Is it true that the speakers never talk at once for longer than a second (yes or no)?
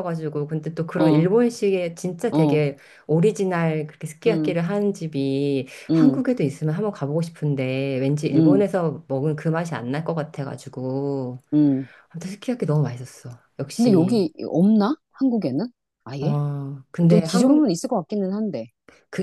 yes